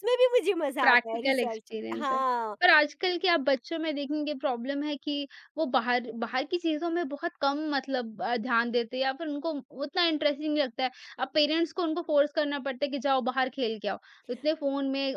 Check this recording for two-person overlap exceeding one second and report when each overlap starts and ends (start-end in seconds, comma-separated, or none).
0.8-2.2